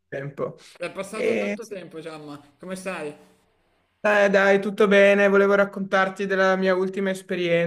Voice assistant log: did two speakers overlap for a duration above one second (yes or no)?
no